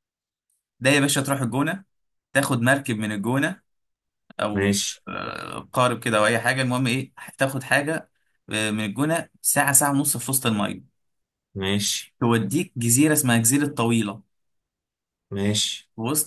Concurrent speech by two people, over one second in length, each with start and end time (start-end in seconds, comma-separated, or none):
none